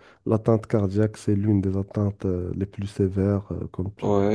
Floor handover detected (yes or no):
yes